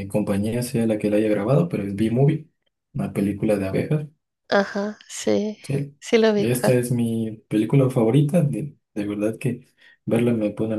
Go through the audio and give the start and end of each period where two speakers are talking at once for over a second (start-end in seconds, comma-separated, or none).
none